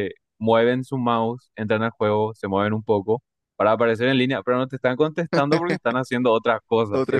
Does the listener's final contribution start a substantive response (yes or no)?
yes